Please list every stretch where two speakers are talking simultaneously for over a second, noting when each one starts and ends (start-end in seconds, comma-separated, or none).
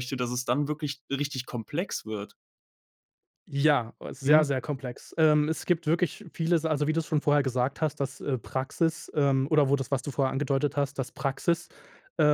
none